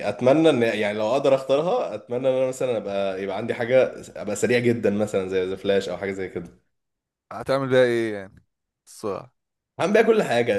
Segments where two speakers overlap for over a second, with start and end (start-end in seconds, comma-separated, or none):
none